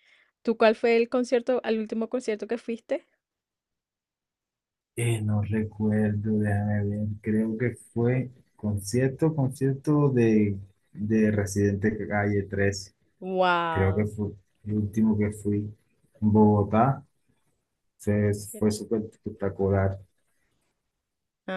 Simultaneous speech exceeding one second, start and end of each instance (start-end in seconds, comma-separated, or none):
none